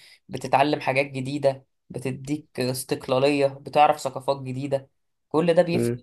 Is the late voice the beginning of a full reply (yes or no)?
no